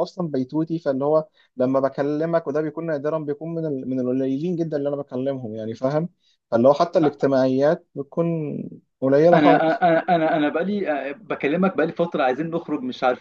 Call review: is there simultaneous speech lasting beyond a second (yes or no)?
no